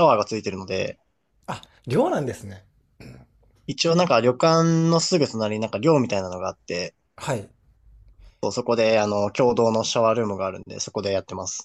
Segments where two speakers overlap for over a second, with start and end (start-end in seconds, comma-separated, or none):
none